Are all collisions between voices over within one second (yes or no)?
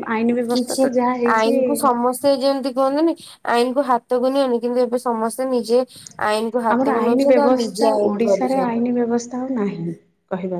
no